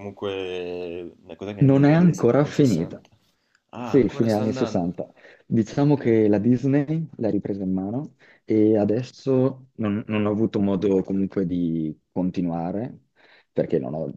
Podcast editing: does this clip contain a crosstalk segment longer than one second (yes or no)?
yes